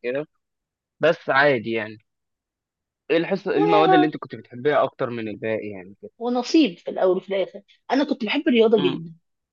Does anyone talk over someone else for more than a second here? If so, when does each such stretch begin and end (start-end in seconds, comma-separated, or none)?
none